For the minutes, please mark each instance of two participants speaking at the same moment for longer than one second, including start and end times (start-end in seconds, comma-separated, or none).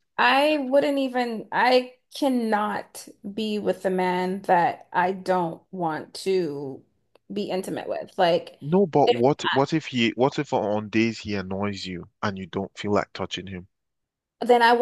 none